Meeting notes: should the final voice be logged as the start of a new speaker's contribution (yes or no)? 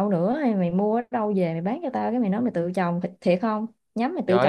yes